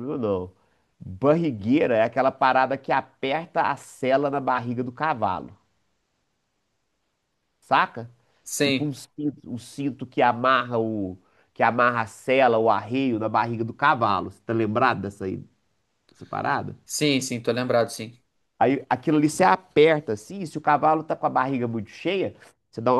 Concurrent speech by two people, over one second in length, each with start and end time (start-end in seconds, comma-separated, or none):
none